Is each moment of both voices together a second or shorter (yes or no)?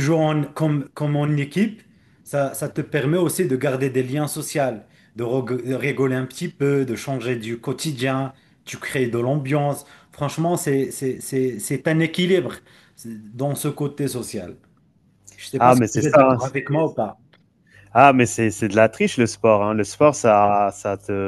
no